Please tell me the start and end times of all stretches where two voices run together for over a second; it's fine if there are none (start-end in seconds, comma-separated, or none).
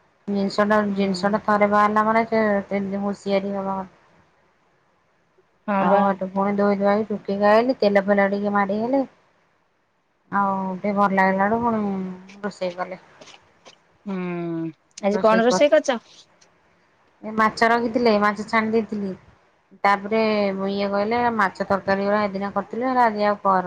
none